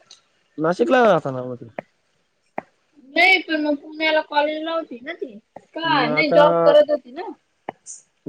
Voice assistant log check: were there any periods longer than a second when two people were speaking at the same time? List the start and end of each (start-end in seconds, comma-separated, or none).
none